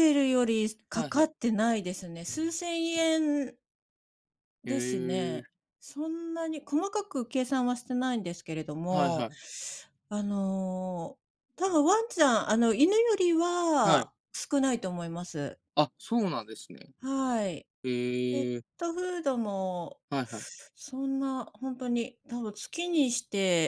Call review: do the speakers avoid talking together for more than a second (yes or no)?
yes